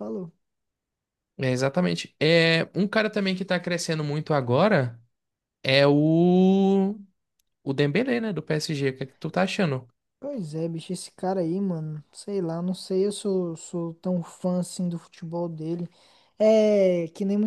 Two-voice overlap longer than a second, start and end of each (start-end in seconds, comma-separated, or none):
none